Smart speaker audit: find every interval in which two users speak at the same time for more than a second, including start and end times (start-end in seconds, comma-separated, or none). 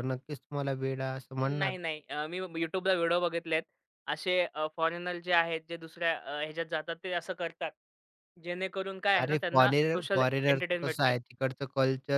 9.2-11.1